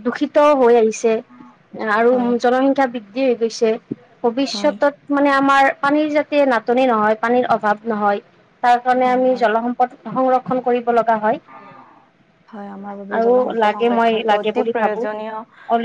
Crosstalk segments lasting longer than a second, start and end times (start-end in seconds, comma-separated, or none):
13.2-15.3